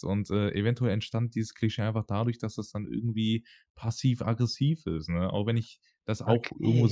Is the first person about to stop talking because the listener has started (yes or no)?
no